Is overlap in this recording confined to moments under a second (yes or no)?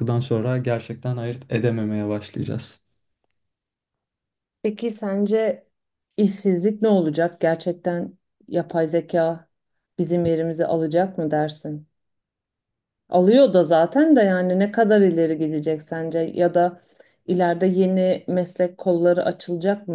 yes